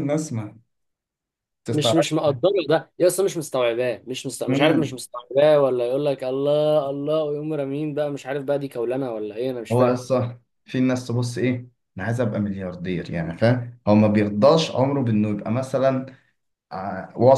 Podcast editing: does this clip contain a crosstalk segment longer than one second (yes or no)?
no